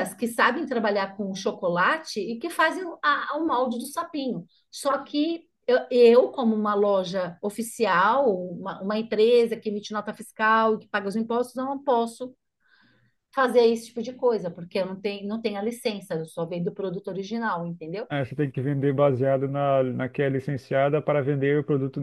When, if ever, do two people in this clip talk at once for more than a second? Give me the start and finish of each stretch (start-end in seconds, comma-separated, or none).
none